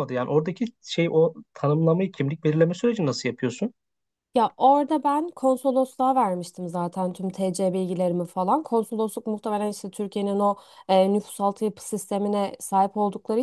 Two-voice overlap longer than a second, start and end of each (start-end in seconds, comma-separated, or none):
none